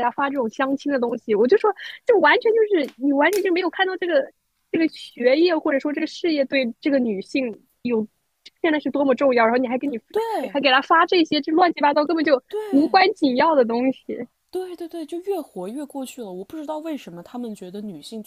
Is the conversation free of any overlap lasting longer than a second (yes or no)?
yes